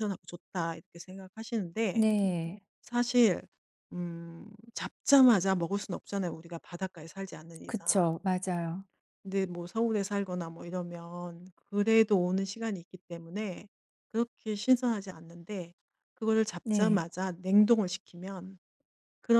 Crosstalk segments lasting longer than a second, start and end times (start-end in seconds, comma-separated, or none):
none